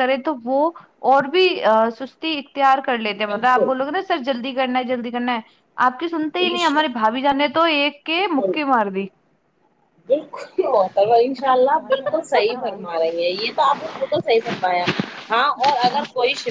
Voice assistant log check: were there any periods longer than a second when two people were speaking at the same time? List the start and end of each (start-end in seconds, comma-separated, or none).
none